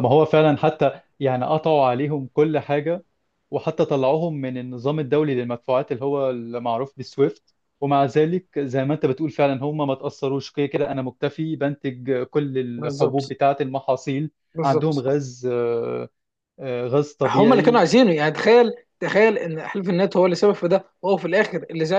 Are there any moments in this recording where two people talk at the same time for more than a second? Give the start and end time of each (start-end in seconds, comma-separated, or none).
none